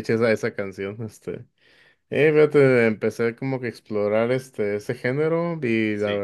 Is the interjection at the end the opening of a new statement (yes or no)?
no